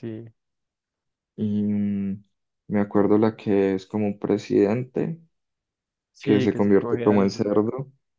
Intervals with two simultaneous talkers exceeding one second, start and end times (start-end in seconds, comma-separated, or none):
6.2-7.5